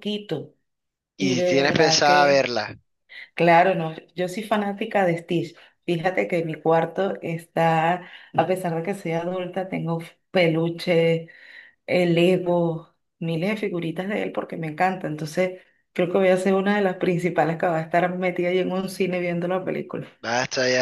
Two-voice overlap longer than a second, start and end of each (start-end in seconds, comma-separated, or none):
1.2-2.5